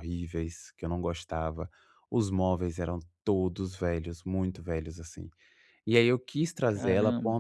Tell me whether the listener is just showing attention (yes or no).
yes